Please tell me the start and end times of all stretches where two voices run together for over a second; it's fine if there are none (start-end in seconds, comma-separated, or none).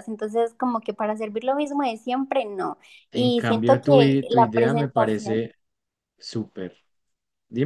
3.1-5.4